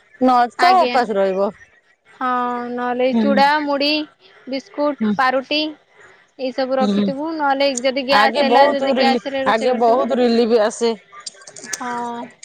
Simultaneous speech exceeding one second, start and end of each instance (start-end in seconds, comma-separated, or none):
8.2-10.9